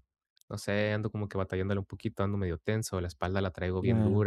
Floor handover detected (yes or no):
no